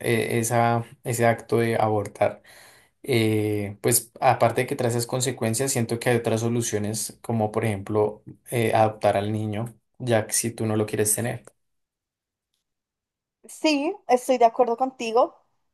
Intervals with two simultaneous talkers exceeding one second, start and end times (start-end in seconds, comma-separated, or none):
none